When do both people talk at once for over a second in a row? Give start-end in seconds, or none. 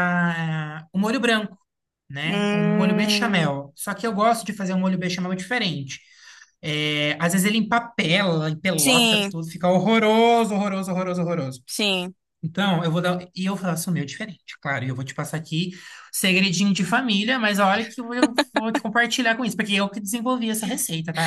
2.2-3.5